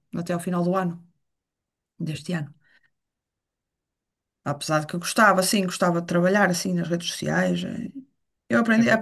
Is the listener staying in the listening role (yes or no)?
yes